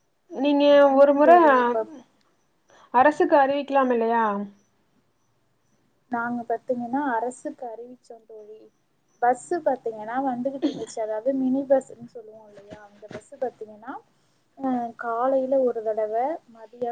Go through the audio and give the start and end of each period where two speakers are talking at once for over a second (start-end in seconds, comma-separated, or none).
none